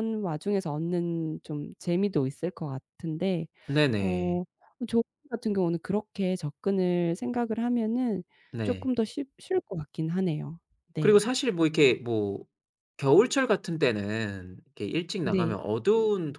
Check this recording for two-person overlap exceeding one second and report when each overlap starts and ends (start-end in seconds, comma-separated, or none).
none